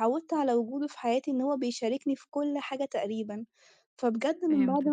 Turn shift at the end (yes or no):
no